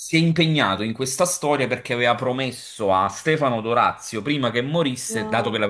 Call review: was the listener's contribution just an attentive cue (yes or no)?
yes